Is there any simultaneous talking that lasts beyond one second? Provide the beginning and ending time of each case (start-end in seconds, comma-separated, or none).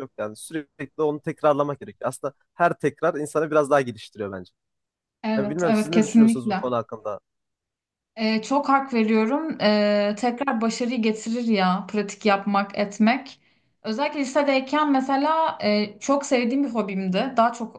5.3-6.6